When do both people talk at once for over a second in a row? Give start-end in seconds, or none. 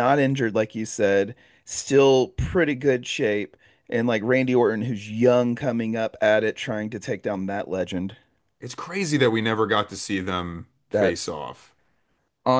none